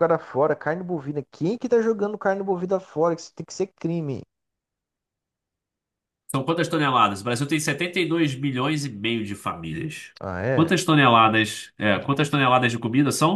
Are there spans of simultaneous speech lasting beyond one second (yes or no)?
no